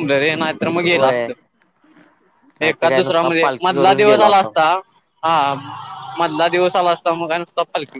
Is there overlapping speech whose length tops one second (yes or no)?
yes